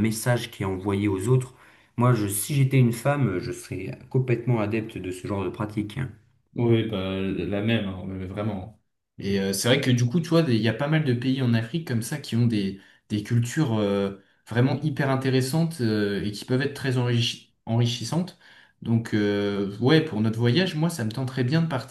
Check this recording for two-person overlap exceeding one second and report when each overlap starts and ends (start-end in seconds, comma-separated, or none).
none